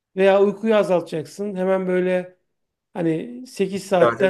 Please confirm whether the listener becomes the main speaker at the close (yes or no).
no